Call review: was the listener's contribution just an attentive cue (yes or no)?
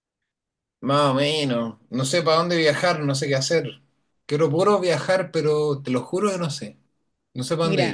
no